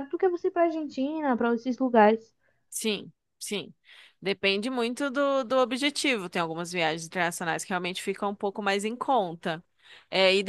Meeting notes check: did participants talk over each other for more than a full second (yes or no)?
no